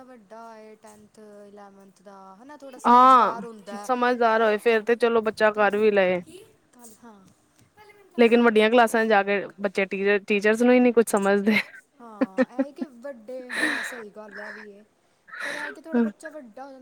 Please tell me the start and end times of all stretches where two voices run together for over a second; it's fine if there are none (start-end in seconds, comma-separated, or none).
none